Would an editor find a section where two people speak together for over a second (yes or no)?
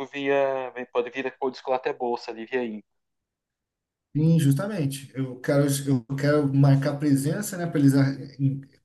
no